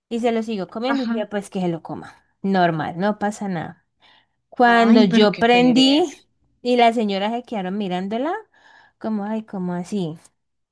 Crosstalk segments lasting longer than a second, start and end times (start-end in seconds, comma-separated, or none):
4.7-6.1